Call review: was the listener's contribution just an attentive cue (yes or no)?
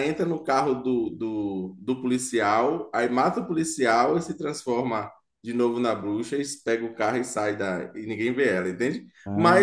yes